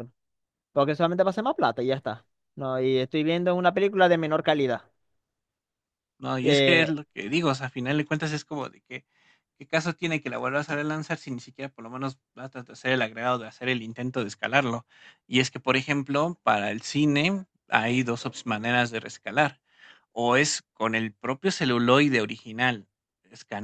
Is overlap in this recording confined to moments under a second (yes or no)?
yes